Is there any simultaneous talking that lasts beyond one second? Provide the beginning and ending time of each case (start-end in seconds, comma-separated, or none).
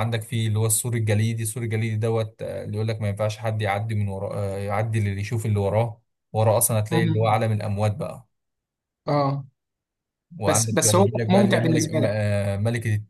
10.5-12.2